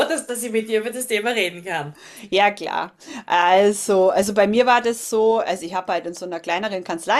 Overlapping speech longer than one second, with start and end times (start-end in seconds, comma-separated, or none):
none